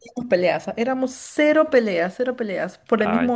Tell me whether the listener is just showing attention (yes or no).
yes